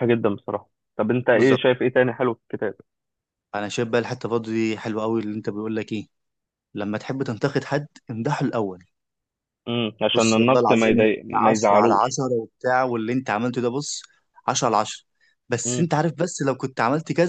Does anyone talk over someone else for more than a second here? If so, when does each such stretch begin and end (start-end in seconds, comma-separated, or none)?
10.1-12.1